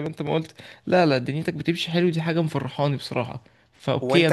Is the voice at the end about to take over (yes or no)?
yes